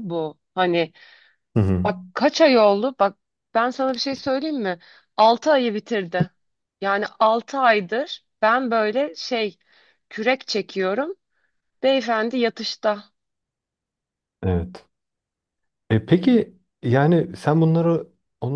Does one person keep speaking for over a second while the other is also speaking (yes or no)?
no